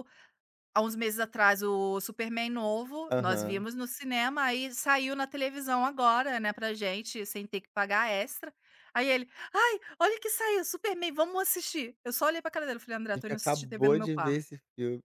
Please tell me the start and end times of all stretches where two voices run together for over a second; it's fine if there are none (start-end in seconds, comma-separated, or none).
13.2-14.4